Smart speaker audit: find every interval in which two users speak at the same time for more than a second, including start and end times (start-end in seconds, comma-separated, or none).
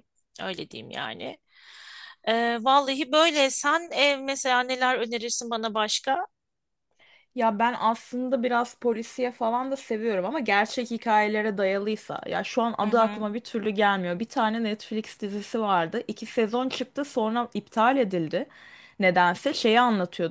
none